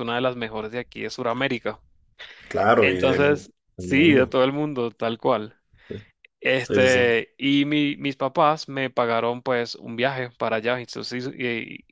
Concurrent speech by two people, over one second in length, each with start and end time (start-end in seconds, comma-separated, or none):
2.8-4.4